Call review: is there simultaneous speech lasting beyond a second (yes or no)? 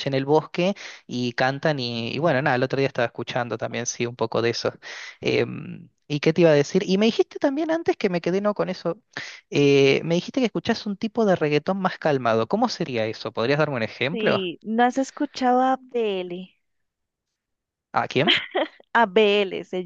no